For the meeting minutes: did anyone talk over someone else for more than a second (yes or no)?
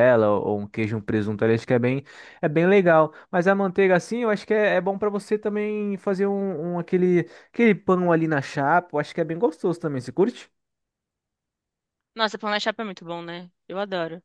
no